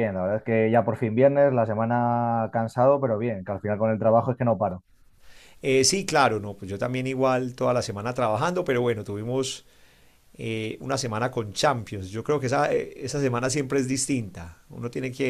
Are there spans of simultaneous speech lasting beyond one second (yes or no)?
no